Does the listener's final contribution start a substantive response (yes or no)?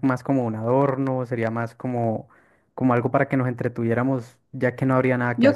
yes